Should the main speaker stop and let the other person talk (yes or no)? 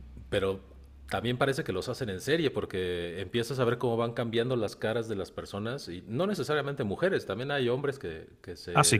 no